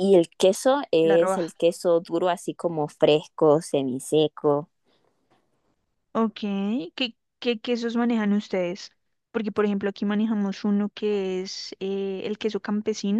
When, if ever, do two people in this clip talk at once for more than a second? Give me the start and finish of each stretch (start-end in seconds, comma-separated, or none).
none